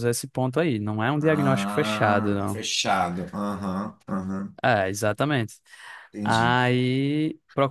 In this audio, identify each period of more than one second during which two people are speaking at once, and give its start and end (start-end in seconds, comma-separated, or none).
1.2-2.6